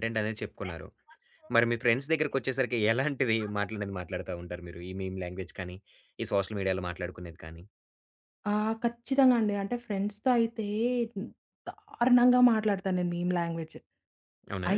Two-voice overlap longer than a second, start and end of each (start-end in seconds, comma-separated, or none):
none